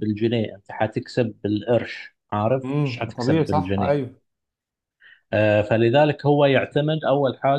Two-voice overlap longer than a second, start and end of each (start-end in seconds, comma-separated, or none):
2.6-4.0